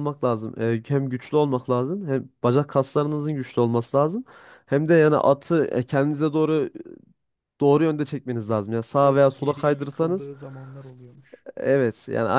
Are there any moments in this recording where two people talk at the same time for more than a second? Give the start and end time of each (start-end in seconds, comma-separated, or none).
9.0-10.3